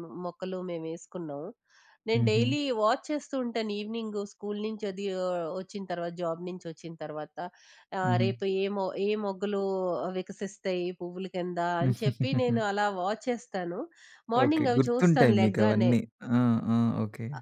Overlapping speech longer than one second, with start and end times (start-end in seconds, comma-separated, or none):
14.4-15.9